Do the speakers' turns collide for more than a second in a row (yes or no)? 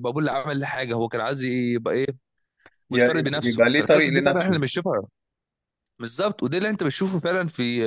yes